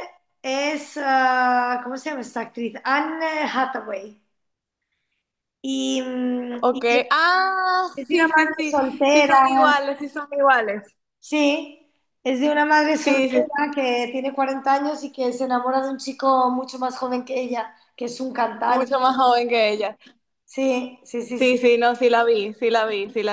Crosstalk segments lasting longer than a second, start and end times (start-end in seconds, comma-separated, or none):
8.0-9.8